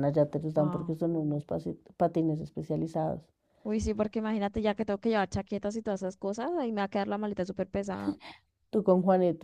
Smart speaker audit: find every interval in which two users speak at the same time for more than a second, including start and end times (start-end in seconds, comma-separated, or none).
none